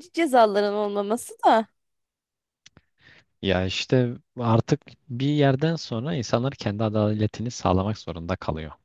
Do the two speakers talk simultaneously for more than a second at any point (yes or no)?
no